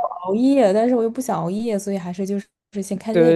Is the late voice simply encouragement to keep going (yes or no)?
no